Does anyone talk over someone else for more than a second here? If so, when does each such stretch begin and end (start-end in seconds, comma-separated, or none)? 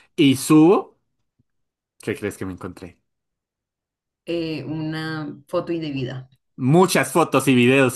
none